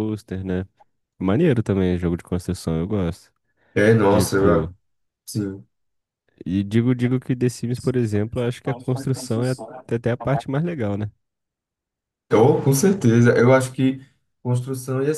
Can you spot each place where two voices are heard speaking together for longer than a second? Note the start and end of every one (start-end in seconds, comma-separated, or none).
none